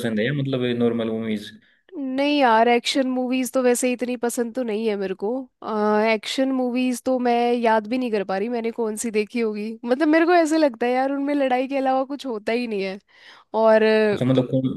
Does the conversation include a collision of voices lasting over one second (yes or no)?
no